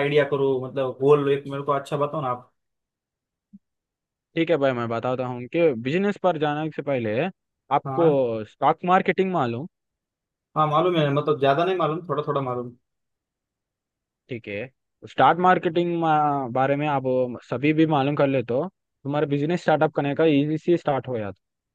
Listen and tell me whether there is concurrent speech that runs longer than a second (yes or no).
no